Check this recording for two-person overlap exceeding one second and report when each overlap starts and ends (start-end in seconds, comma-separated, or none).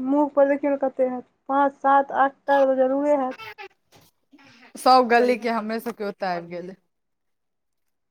none